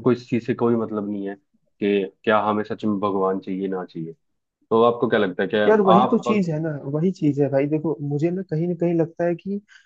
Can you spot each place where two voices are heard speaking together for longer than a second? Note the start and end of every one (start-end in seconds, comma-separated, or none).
none